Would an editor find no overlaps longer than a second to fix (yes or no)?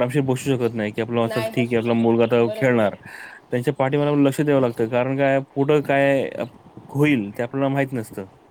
no